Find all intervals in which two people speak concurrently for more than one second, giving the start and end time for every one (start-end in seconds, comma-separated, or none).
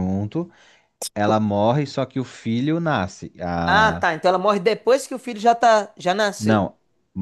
none